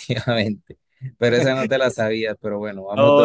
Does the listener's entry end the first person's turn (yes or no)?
yes